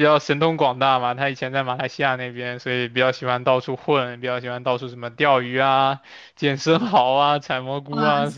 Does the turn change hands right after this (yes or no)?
no